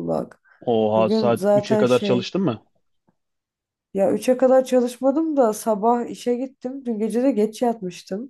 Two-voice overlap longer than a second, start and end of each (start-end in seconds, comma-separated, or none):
1.0-2.3